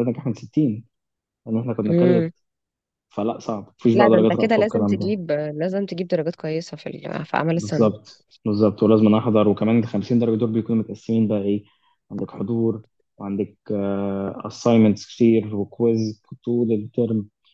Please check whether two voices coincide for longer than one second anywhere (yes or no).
yes